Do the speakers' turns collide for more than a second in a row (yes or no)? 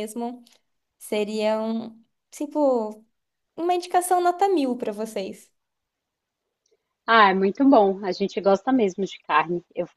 no